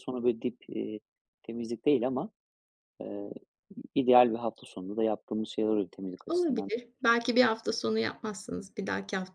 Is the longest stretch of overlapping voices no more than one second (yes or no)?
yes